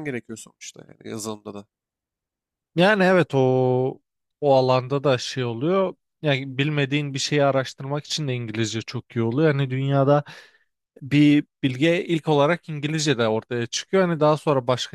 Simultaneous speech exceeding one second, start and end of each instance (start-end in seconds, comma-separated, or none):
none